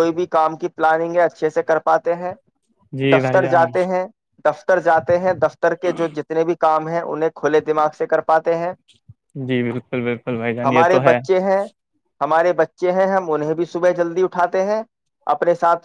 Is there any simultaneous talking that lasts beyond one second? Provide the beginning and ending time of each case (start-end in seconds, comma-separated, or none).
none